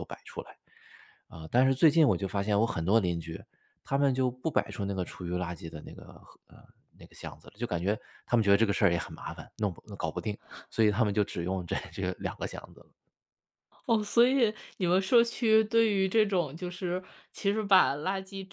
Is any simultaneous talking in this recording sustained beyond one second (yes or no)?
no